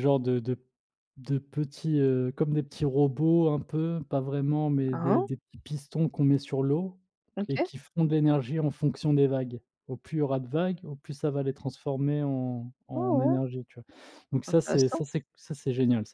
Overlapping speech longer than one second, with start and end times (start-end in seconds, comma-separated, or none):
none